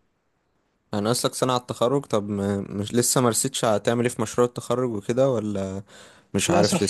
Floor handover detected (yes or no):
yes